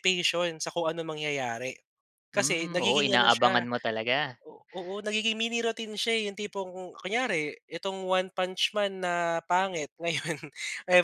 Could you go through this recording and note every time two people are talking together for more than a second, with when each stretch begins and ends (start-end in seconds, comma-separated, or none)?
2.3-3.6